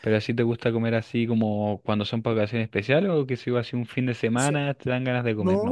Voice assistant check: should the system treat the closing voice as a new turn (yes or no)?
yes